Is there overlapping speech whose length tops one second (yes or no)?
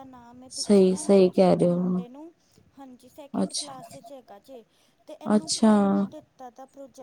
yes